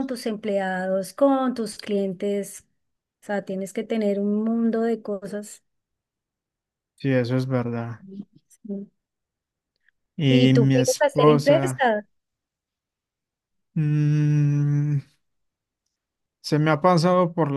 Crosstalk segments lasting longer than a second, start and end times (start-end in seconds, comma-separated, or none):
10.3-11.9